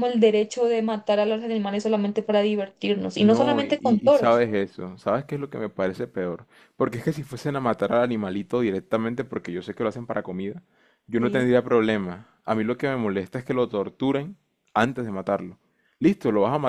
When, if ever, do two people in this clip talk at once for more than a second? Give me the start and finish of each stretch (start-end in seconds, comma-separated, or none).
3.2-4.5